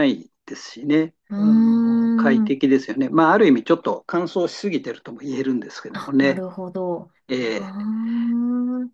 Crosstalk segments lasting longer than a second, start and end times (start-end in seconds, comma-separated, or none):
1.3-2.5